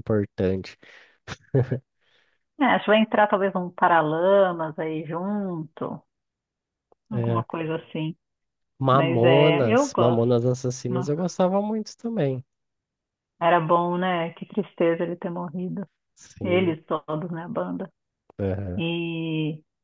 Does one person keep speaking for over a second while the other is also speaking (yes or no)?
yes